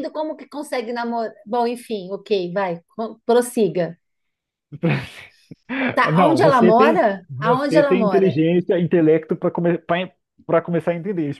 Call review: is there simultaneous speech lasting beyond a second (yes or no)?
yes